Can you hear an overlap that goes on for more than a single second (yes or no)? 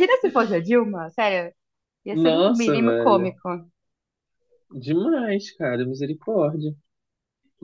yes